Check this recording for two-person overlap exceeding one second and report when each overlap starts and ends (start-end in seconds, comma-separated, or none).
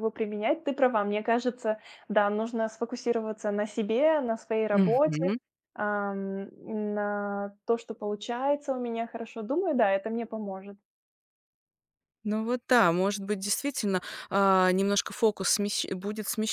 none